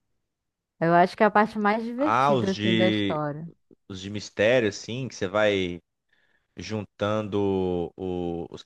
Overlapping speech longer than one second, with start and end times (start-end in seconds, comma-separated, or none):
2.0-3.2